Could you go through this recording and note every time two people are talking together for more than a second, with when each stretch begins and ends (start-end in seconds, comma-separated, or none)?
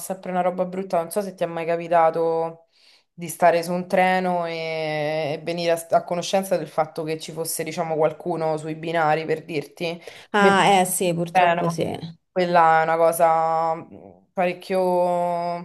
none